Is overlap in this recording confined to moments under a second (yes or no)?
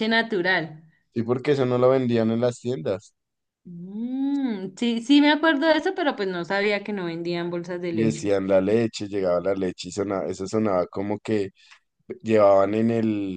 yes